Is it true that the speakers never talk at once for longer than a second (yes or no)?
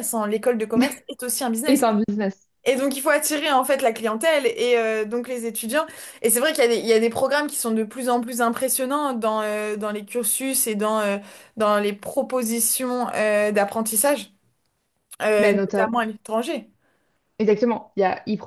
yes